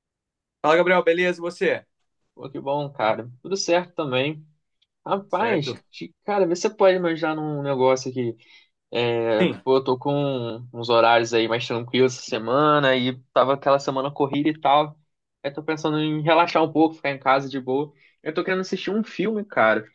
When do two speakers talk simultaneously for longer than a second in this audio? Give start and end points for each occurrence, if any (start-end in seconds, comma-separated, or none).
none